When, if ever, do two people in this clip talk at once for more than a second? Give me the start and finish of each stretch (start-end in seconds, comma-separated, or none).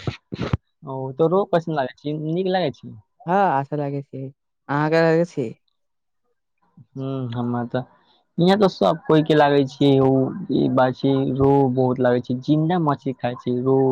none